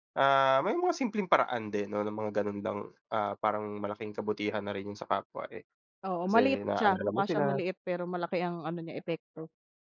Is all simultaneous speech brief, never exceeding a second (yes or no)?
no